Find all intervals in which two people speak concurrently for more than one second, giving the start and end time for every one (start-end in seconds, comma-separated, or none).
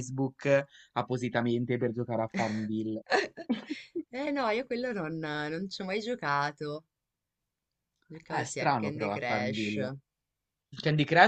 8.3-9.8